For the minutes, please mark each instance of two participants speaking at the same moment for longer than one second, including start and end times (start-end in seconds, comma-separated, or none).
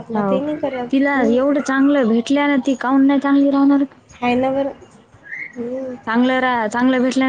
none